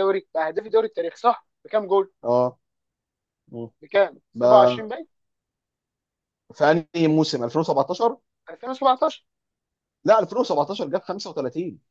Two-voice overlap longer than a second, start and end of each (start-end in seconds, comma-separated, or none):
none